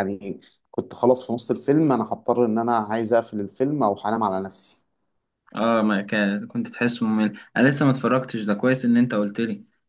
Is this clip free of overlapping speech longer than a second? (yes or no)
yes